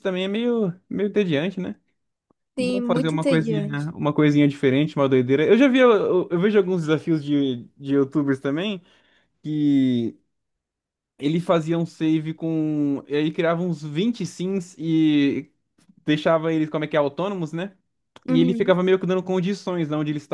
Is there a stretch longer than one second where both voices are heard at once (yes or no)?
yes